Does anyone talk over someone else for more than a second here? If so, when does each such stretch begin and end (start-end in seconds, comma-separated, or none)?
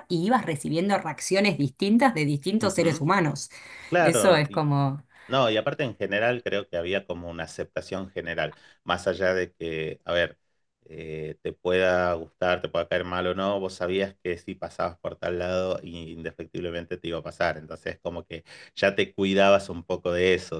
none